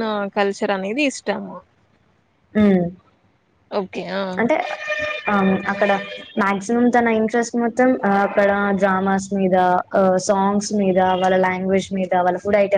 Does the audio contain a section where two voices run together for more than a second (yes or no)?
no